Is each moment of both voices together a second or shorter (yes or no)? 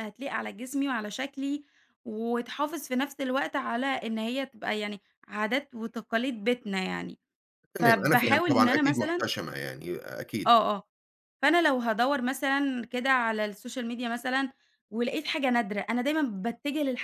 no